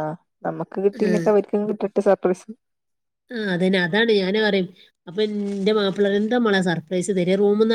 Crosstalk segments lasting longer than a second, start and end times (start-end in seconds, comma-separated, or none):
none